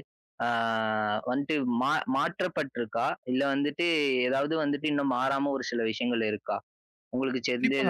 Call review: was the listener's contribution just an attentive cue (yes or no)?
no